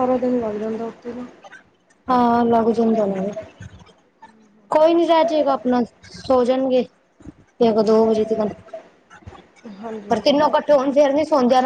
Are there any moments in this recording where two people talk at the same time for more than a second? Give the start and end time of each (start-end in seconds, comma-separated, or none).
none